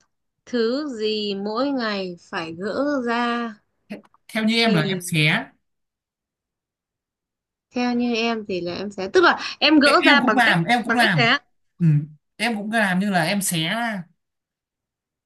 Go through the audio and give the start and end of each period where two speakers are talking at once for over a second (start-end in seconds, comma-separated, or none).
9.8-11.3